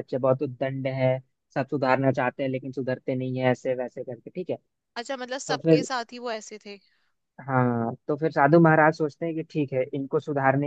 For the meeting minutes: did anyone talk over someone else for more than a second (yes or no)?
no